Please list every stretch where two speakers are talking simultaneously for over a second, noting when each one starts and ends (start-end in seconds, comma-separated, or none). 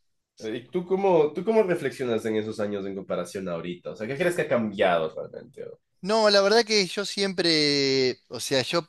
none